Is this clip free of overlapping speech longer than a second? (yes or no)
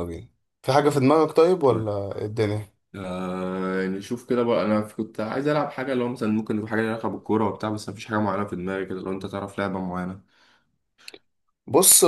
yes